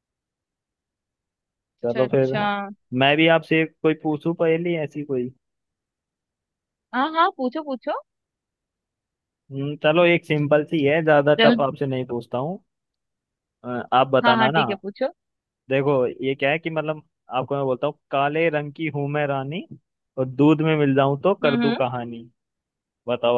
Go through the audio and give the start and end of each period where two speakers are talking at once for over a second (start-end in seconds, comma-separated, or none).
none